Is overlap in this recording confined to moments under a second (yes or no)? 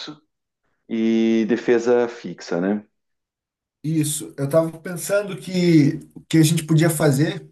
yes